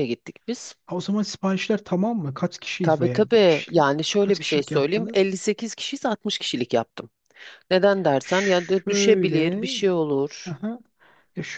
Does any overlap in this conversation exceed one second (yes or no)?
yes